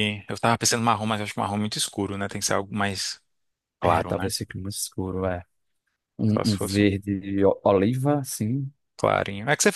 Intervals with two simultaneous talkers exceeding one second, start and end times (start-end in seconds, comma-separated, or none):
none